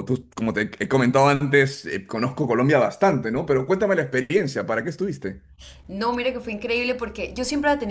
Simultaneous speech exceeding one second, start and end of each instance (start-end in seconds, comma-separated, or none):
none